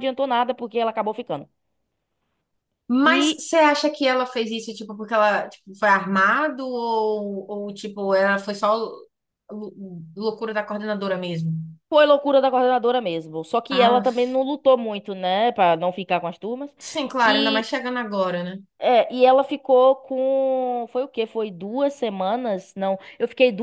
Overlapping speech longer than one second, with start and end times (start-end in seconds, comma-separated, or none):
none